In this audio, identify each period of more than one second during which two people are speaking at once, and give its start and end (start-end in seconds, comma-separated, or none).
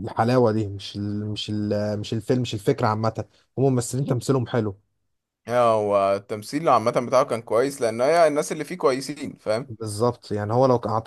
none